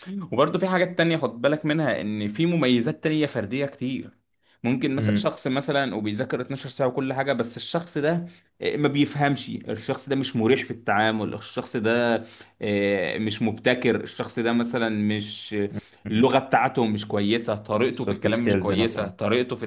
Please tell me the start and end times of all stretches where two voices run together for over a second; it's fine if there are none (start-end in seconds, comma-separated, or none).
17.9-19.2